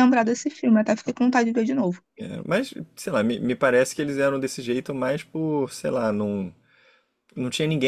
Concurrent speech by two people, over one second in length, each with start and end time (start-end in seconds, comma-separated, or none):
none